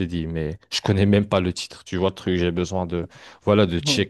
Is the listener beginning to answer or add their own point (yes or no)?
no